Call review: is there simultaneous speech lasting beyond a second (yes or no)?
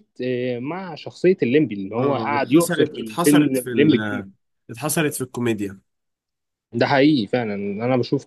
yes